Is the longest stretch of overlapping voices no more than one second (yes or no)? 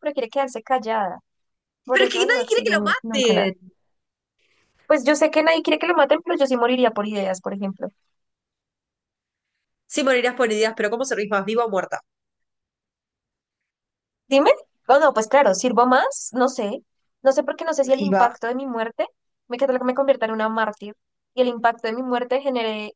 no